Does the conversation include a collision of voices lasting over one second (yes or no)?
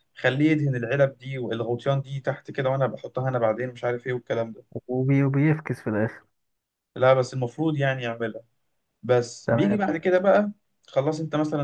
no